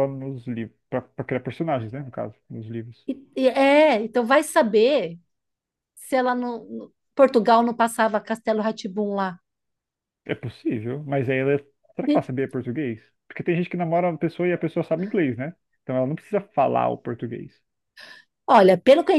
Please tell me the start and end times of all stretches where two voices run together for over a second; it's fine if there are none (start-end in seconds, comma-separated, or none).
none